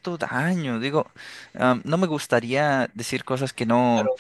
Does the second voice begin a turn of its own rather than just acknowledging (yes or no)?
yes